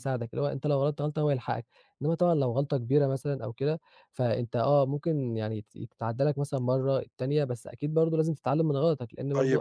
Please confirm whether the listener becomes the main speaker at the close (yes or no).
yes